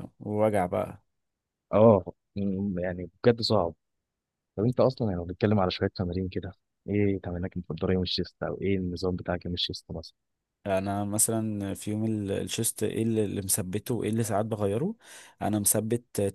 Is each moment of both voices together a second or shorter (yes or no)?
yes